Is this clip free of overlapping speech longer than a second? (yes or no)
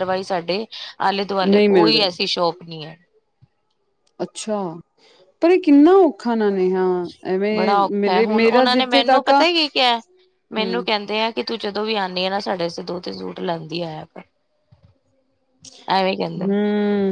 no